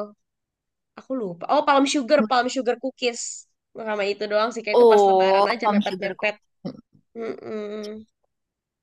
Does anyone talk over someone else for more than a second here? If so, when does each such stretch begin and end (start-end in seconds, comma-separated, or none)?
4.7-6.3